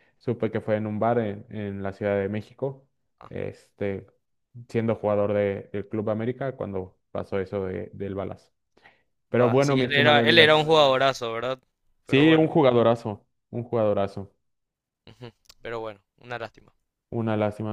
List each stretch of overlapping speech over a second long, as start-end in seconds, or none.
9.4-10.7